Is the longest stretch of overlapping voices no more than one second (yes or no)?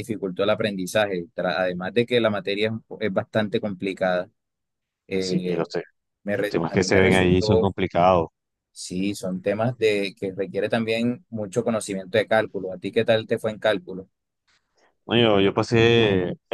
no